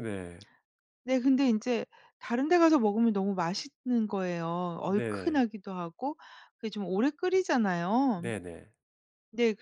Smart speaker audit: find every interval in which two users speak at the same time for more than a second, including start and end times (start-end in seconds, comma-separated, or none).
none